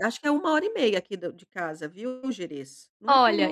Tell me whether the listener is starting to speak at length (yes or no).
yes